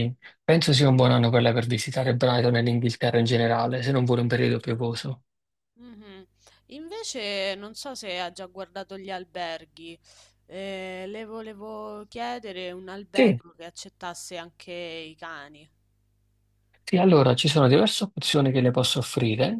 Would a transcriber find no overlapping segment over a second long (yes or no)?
yes